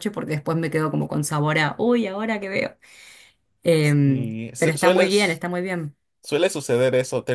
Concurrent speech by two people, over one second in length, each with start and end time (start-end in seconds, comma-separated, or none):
4.0-5.5